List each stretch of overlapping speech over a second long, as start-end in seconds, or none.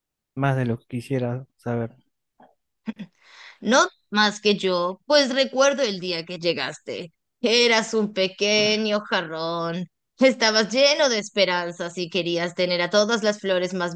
none